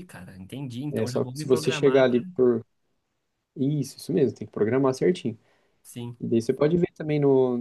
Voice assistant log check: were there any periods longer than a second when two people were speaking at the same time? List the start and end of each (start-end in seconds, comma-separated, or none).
0.9-2.2